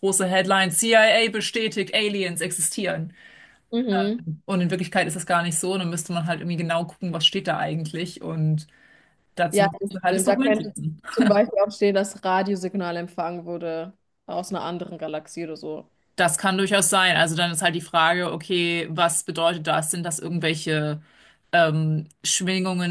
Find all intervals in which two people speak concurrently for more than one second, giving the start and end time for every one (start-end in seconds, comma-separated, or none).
9.5-10.7